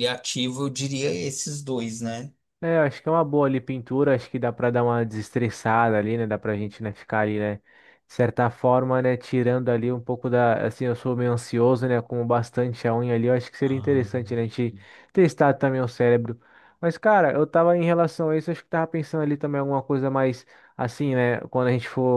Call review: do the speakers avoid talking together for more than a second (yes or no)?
yes